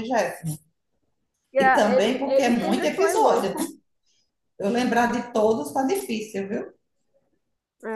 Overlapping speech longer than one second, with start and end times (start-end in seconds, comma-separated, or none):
1.6-3.6